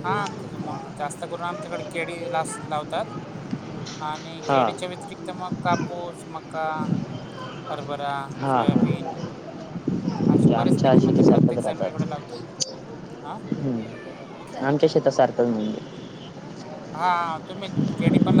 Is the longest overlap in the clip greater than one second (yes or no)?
yes